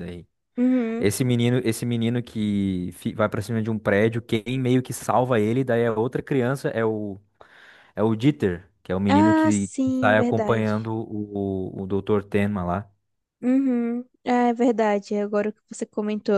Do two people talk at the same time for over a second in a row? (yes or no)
yes